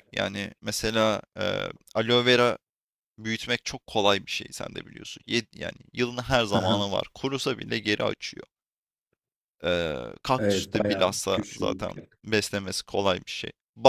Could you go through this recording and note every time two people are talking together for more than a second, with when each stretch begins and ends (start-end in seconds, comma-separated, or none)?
10.4-11.8